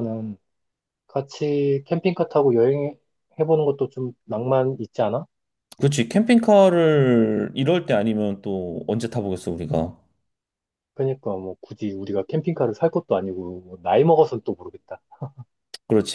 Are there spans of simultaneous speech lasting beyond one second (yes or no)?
no